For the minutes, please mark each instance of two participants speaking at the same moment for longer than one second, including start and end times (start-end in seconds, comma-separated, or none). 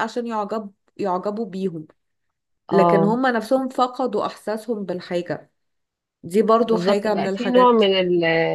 6.6-7.8